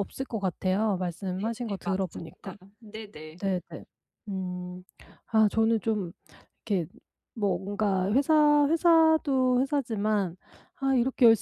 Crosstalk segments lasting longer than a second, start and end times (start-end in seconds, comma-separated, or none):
1.2-2.6